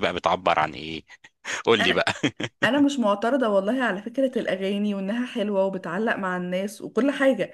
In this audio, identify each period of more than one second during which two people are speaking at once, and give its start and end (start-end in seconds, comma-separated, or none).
none